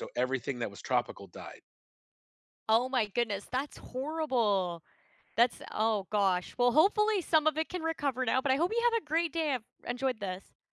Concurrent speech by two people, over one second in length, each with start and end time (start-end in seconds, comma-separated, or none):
none